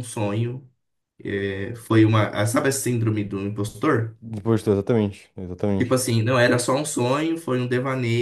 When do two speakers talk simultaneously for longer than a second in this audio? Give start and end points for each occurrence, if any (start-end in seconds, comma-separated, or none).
none